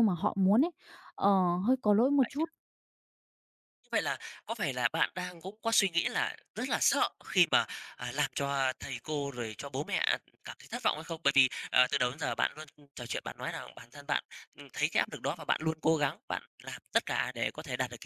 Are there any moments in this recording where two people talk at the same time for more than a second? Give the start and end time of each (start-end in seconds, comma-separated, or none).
none